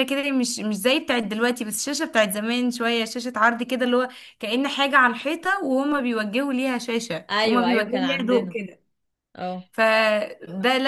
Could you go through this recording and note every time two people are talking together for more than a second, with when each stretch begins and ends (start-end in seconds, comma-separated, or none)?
7.3-8.6